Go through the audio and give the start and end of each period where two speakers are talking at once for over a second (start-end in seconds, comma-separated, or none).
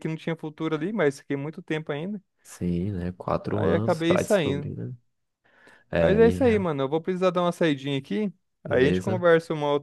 3.5-4.7